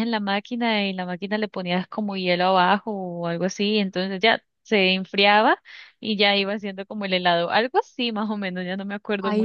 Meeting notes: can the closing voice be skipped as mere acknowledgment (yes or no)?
no